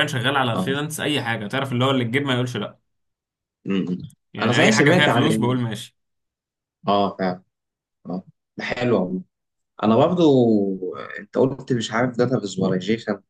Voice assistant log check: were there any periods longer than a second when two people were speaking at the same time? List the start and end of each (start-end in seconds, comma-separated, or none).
4.4-5.6